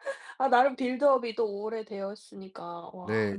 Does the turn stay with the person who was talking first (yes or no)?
no